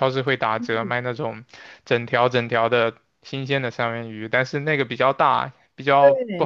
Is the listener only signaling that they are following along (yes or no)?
no